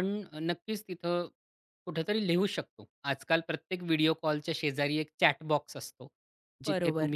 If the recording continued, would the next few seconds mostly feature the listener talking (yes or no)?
no